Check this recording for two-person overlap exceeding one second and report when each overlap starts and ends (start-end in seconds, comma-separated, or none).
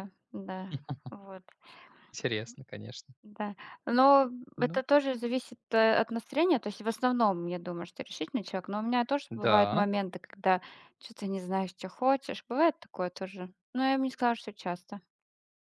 none